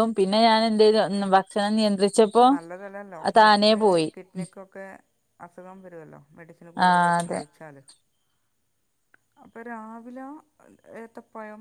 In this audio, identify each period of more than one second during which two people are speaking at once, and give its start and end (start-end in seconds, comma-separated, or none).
none